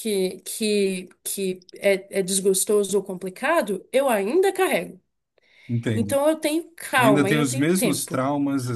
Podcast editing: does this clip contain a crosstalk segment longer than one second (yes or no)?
yes